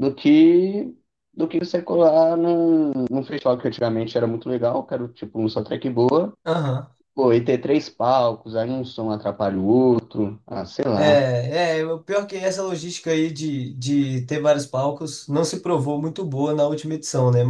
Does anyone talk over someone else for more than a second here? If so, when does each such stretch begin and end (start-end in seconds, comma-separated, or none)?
none